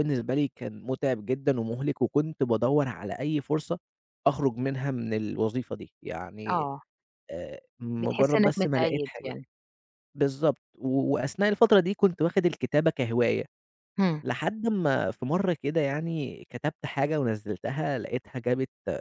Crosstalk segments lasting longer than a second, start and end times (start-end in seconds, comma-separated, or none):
8.0-9.3